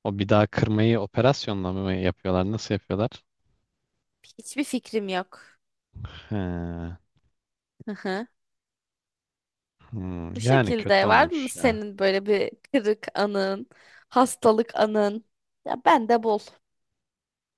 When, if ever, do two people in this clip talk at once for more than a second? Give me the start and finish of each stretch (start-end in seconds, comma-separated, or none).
10.3-11.8